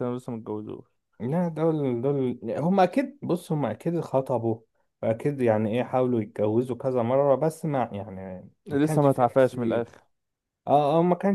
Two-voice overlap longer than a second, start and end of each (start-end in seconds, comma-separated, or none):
8.7-9.9